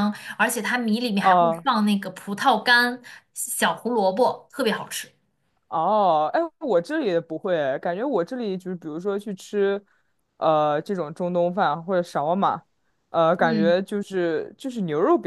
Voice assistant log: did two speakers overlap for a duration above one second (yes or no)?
no